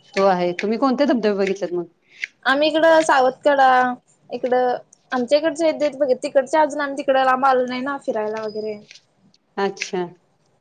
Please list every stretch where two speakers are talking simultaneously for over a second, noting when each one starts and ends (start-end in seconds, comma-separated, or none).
none